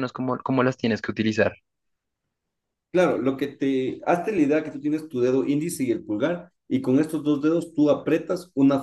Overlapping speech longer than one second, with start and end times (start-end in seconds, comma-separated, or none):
none